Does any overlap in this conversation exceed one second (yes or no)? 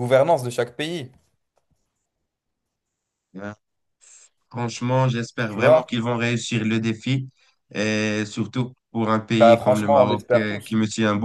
yes